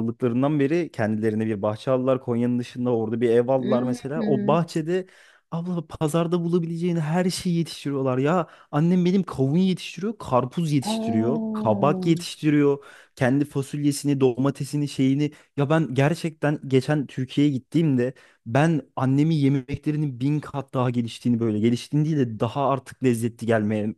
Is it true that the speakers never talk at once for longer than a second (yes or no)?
no